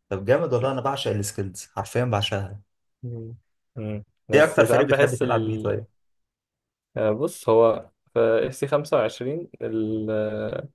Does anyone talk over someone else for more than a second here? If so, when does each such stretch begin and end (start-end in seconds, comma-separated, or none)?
4.3-5.8